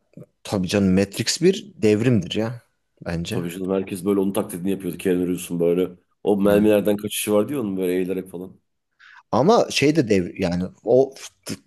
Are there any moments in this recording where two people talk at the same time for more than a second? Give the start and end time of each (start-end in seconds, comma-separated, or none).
none